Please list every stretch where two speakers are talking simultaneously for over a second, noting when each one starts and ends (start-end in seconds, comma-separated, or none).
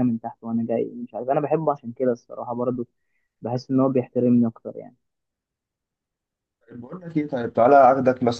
none